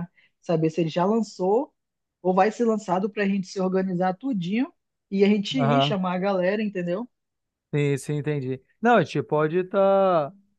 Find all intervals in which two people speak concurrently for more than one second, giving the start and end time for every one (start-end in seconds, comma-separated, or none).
none